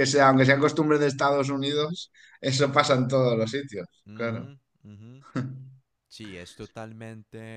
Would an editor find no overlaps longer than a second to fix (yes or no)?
yes